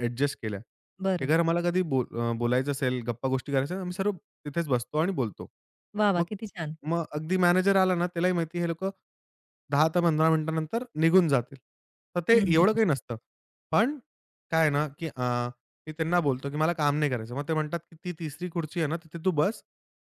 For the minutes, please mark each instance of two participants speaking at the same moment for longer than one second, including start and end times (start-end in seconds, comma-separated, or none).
none